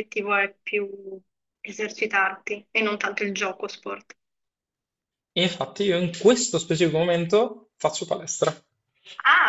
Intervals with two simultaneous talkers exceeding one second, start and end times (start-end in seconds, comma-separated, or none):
none